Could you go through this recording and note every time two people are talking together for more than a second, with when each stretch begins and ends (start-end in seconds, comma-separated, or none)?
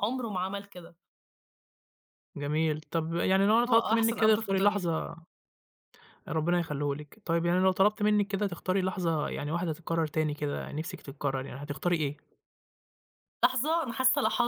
3.7-4.9